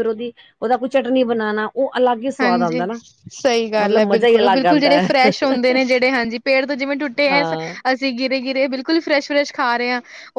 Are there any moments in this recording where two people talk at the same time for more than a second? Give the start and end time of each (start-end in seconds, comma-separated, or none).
3.8-5.1